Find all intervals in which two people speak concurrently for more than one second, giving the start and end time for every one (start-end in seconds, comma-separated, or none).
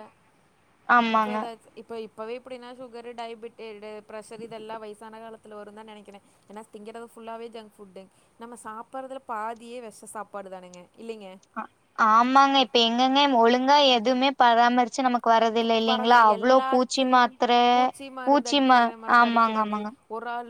15.6-17.4